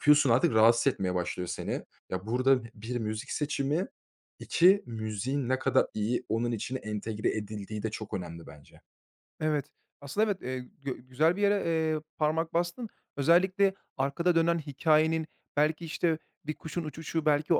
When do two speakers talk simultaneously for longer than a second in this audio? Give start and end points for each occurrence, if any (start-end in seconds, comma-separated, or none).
none